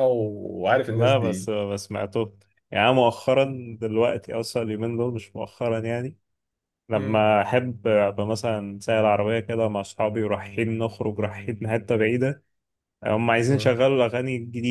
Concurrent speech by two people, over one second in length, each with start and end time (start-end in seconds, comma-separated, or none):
none